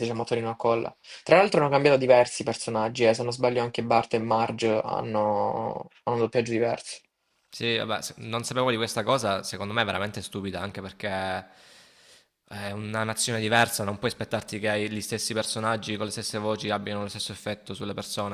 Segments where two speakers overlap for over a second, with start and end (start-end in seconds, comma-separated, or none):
none